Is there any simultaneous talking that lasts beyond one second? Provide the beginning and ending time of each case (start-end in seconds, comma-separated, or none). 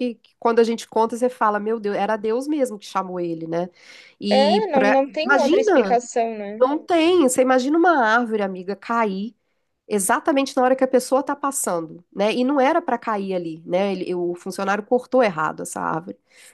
4.3-6.0